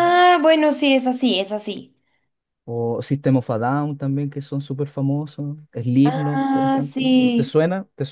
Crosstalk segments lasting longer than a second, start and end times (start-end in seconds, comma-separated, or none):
6.0-7.6